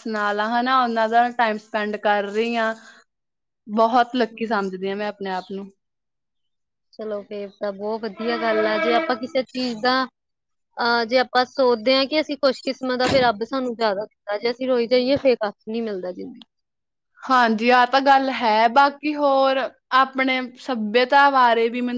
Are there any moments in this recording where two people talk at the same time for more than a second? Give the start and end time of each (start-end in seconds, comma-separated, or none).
none